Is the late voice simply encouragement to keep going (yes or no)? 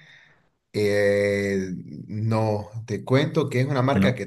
yes